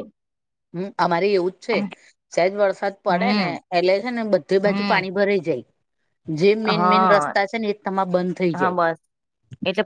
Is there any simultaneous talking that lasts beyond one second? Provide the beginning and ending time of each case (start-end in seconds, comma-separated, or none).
none